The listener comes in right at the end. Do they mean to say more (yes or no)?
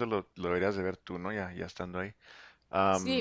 yes